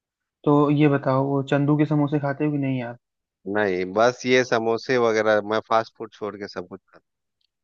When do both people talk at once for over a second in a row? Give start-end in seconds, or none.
none